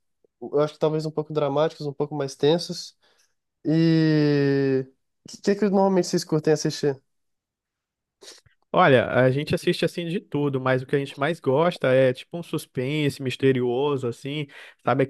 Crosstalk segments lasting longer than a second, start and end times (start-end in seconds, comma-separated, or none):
none